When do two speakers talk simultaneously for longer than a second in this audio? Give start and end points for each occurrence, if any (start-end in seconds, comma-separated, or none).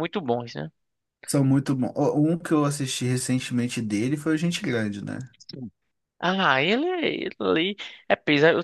none